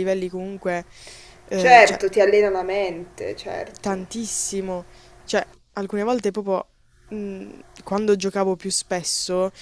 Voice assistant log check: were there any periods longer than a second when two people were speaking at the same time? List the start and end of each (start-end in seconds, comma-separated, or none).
none